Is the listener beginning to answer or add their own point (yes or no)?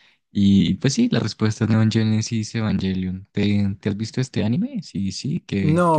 yes